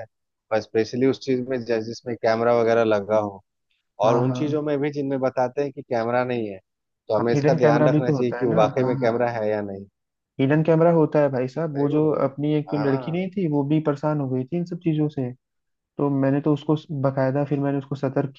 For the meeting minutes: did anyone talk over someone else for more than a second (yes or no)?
yes